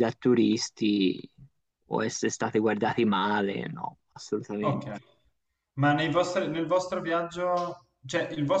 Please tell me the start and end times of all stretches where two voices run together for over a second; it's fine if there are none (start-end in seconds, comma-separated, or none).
none